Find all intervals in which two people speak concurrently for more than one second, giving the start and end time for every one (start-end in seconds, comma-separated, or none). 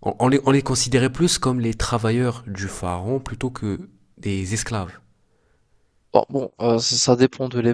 none